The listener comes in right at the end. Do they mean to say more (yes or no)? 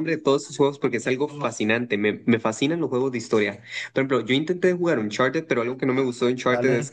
no